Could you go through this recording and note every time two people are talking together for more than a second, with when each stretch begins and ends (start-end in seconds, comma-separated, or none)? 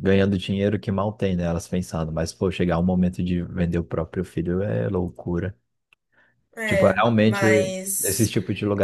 6.7-8.3